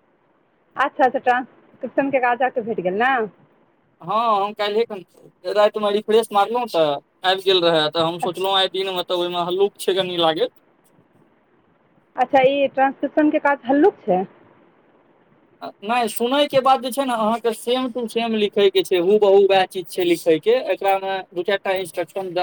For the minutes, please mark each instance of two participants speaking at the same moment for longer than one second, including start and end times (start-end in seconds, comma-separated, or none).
none